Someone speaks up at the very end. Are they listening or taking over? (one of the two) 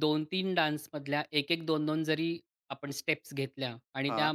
listening